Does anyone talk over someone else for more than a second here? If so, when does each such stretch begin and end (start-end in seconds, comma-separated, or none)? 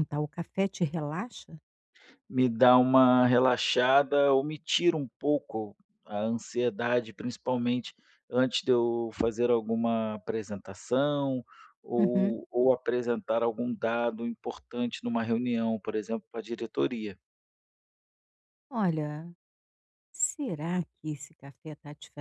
none